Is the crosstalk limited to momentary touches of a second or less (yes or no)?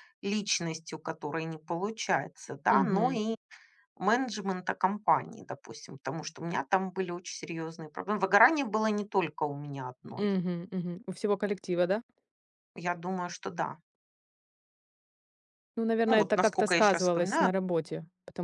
no